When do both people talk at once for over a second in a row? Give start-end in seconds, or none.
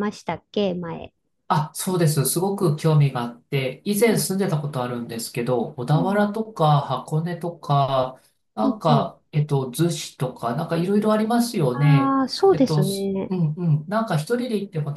11.7-13.3